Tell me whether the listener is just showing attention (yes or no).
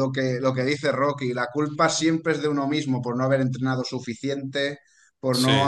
yes